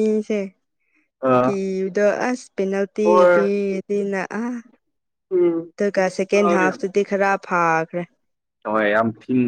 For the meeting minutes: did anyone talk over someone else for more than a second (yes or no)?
no